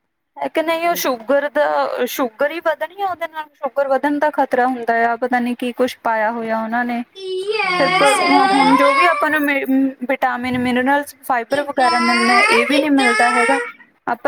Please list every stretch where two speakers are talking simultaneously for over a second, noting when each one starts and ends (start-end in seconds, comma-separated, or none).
11.5-13.6